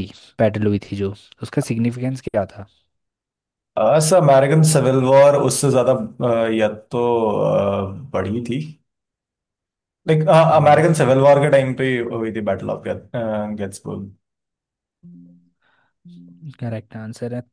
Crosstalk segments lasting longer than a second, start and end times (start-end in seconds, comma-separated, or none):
none